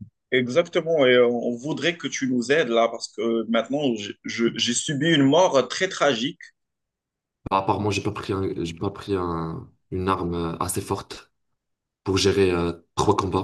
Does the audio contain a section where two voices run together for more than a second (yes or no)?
no